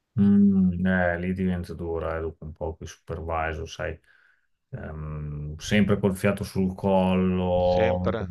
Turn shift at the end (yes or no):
no